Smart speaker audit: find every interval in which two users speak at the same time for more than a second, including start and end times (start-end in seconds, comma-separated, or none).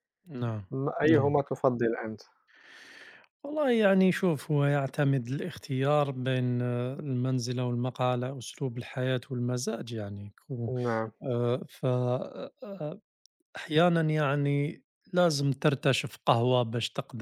none